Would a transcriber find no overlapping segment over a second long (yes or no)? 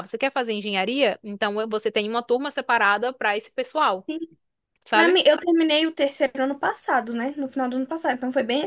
yes